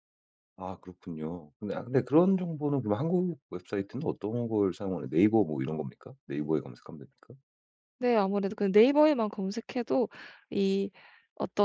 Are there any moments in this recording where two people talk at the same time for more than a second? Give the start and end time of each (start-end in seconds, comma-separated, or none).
none